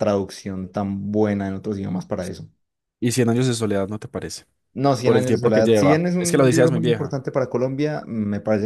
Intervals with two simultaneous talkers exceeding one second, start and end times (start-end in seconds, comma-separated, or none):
5.0-7.1